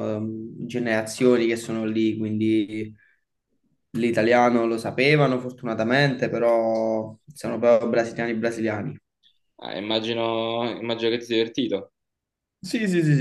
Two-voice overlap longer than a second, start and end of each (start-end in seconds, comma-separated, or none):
none